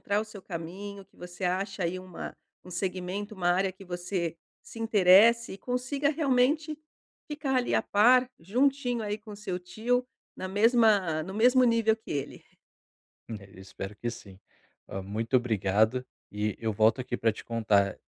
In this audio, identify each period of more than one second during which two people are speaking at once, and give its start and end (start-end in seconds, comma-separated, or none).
none